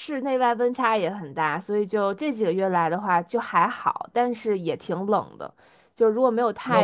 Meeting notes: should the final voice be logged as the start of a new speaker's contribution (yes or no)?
yes